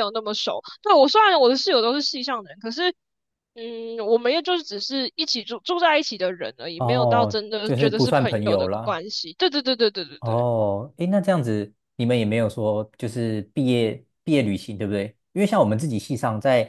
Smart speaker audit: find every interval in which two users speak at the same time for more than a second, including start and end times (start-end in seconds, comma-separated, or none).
6.8-9.0